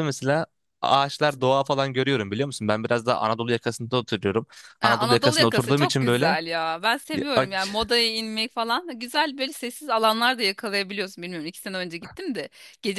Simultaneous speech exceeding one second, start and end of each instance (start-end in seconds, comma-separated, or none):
4.8-6.4